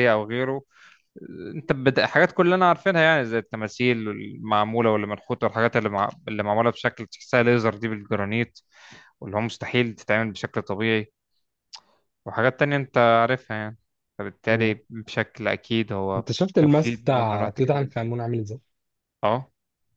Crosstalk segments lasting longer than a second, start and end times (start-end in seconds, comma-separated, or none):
16.2-18.1